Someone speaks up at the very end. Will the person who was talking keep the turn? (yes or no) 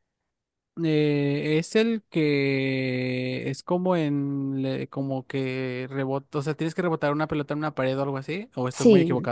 no